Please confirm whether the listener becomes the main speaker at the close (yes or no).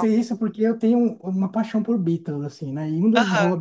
no